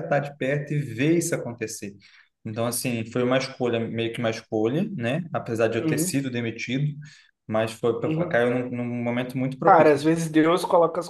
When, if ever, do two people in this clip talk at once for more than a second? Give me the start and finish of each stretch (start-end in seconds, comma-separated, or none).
none